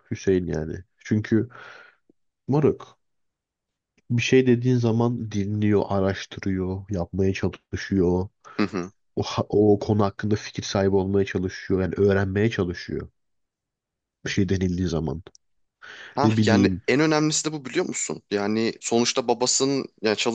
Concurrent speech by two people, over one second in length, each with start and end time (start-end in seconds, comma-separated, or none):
none